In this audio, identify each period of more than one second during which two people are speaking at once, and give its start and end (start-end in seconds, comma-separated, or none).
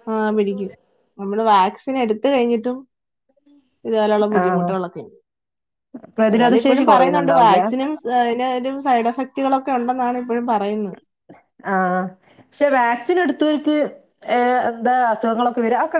6.3-7.6